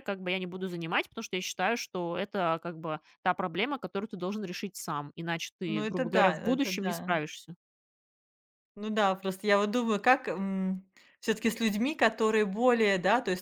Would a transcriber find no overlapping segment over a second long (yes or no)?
no